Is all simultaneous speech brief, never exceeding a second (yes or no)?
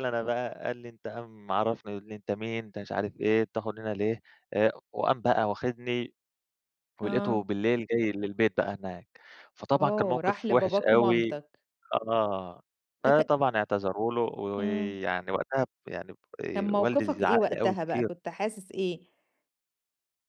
no